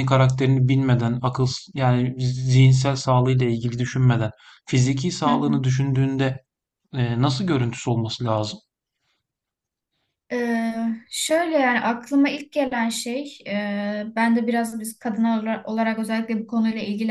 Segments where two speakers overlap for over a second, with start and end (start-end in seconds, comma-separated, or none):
none